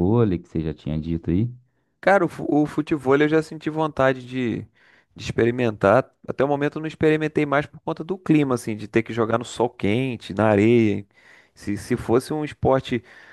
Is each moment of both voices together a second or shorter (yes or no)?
yes